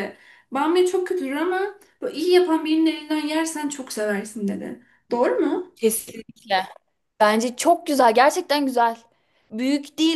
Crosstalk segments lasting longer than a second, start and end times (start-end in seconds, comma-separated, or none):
none